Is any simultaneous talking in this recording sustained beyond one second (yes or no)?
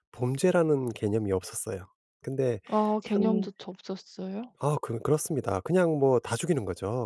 no